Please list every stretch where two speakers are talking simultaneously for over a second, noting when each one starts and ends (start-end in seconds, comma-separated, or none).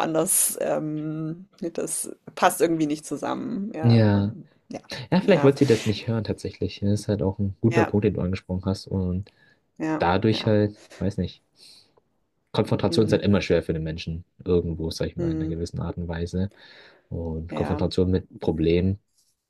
none